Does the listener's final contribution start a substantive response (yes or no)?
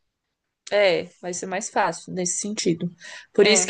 no